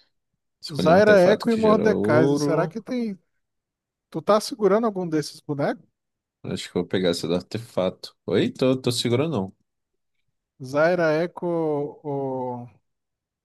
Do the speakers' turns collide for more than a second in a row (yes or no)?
yes